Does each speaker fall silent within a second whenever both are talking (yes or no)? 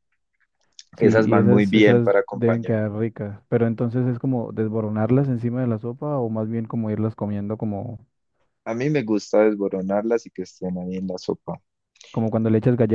no